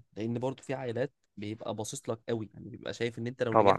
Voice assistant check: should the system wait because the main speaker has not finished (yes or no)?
yes